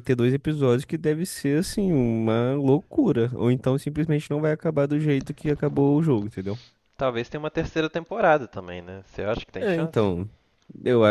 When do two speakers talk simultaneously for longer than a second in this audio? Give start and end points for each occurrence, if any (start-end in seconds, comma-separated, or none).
none